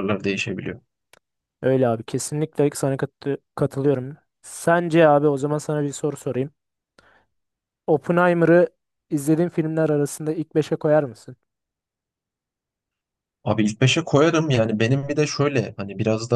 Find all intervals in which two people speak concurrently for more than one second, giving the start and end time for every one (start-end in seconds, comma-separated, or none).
none